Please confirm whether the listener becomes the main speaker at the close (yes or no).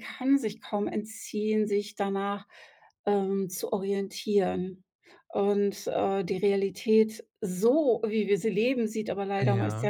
no